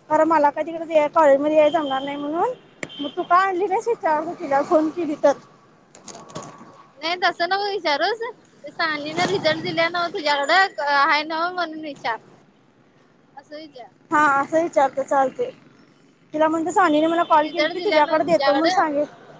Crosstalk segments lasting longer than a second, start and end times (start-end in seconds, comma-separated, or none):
17.4-18.8